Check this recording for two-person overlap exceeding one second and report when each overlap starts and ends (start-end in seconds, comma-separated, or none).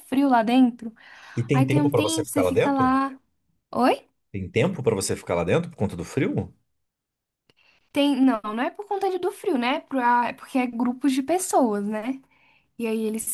1.5-2.9